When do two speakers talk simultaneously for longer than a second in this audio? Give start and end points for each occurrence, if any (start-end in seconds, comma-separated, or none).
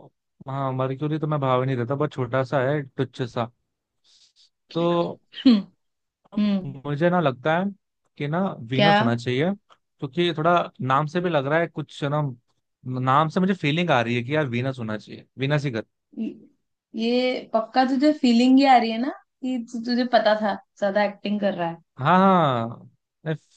none